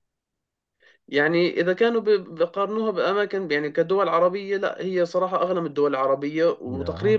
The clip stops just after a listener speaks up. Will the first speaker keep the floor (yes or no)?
yes